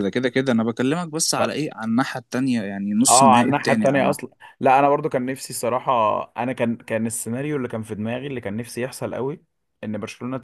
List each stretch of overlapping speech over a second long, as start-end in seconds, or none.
3.1-4.3